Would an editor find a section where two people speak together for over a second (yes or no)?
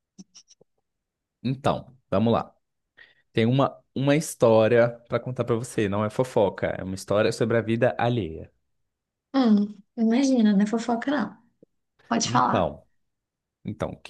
no